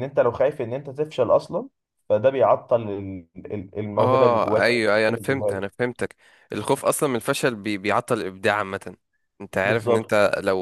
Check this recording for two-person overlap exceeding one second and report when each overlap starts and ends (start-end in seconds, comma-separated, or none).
4.0-5.6